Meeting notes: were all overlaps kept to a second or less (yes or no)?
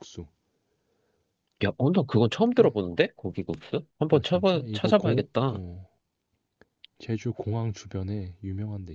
no